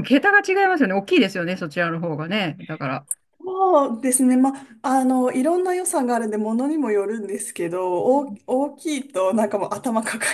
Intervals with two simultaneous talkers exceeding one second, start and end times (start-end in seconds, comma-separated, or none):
none